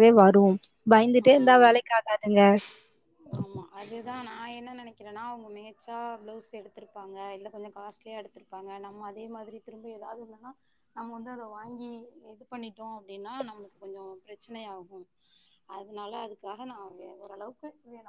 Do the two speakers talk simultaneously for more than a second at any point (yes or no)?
no